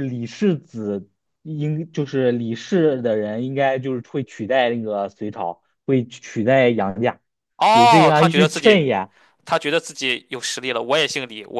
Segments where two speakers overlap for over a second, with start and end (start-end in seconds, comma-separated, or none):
7.7-8.9